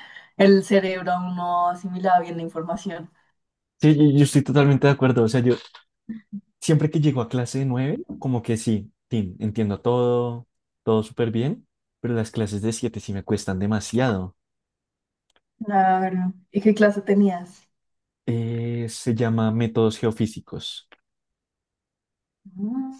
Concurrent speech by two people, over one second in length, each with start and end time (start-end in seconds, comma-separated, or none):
none